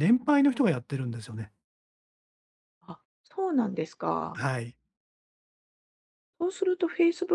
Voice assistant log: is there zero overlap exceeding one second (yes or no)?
yes